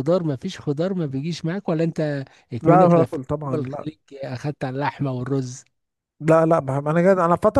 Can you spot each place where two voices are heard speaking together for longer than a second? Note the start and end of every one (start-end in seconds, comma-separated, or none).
2.6-3.9